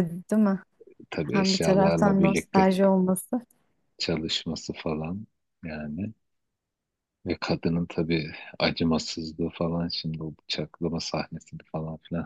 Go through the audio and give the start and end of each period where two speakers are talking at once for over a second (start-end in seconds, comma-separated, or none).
1.2-2.7